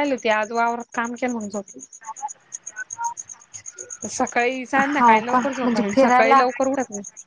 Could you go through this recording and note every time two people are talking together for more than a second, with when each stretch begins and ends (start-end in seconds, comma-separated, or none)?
4.8-6.4